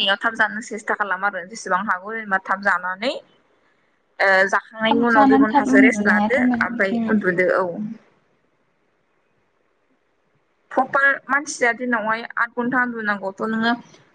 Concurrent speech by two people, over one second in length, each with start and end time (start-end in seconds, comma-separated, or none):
4.9-7.0